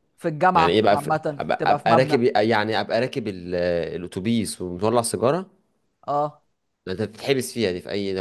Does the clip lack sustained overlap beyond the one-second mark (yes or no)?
no